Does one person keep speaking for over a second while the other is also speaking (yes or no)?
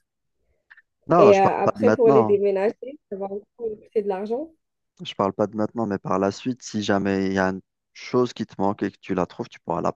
yes